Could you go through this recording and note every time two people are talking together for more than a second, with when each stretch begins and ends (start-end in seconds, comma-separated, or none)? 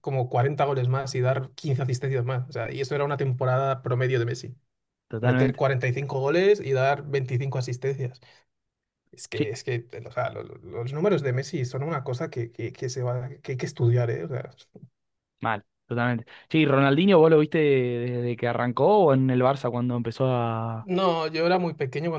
none